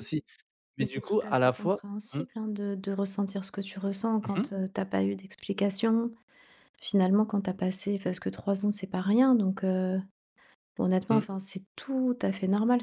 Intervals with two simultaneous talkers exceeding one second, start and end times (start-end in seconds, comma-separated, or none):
0.8-2.2